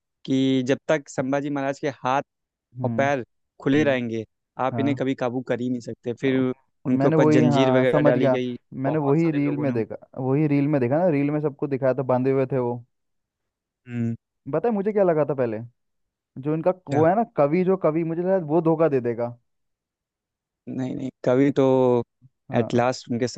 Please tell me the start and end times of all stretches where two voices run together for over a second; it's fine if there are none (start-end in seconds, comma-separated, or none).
6.9-9.8